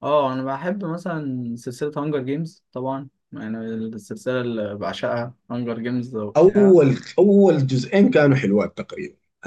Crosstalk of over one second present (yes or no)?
no